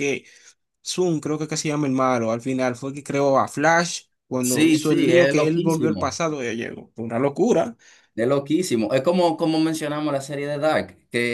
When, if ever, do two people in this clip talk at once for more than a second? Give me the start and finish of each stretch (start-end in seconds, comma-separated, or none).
4.4-6.2